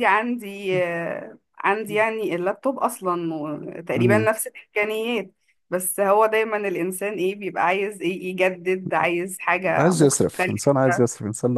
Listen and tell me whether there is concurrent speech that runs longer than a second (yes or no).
yes